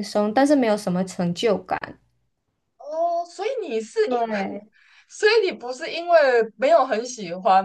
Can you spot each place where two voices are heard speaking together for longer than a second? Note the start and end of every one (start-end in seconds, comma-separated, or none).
none